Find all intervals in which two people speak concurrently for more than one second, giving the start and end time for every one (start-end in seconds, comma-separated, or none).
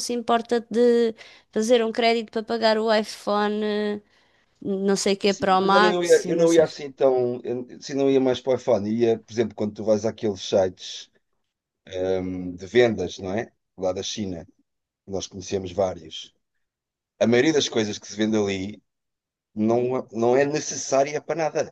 5.2-6.8